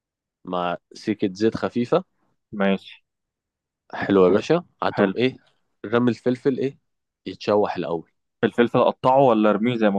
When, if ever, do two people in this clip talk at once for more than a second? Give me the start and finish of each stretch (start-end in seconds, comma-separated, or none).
none